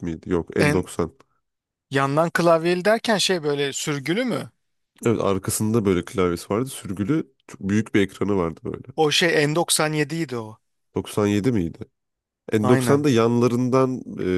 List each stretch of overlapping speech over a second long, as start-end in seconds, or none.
none